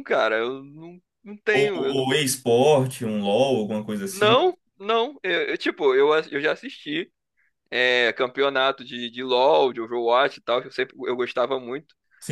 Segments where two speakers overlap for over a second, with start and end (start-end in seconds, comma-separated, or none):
none